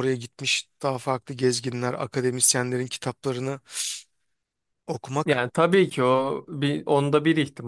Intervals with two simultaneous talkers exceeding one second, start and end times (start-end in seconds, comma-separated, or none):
none